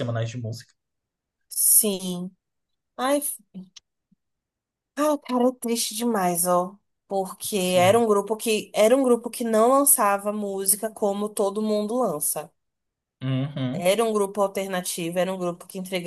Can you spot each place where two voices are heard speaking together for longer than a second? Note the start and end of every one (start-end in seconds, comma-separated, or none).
none